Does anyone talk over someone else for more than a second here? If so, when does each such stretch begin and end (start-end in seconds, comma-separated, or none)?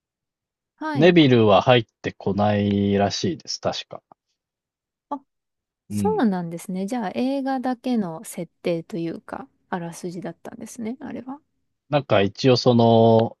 none